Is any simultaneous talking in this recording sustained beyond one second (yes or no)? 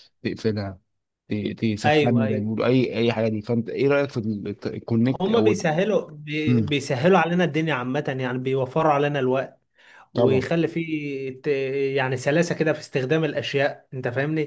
no